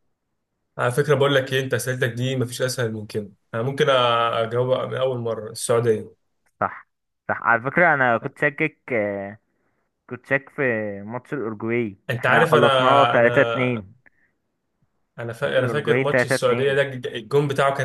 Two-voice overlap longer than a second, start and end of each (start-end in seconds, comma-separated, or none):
12.1-13.9, 15.4-16.8